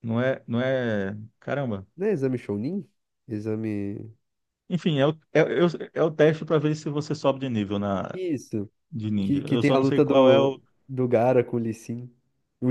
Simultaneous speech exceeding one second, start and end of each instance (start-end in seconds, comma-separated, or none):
9.2-10.6